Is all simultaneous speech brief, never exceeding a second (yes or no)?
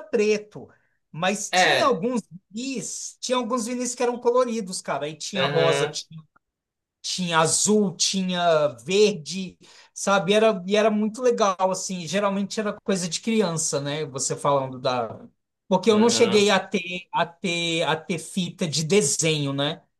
yes